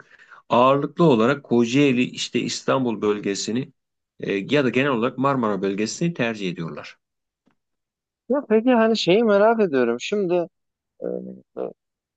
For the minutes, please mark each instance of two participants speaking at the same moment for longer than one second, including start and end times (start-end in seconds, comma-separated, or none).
none